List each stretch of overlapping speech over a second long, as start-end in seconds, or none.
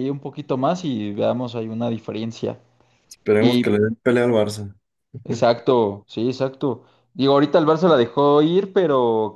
none